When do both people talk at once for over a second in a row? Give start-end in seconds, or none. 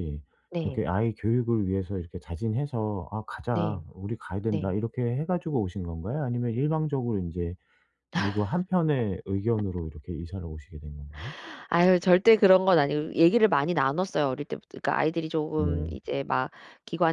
none